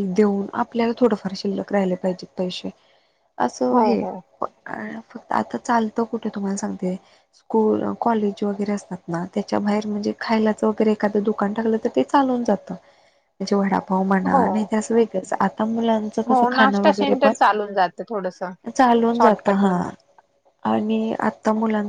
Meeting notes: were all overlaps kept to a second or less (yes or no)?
no